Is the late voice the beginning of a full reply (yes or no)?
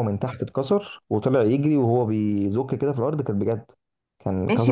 yes